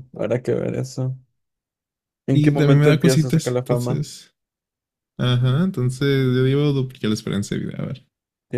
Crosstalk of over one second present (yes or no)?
yes